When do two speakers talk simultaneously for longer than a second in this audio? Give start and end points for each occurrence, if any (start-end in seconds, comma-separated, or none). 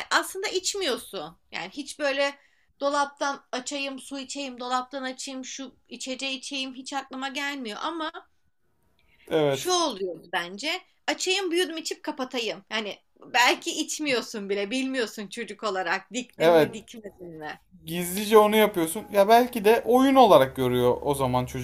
none